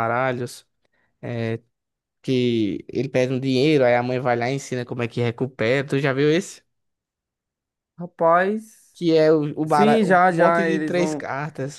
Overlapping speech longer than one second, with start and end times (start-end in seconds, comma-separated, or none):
9.7-11.3